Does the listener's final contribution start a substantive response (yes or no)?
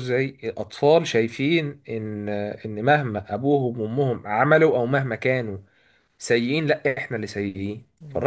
no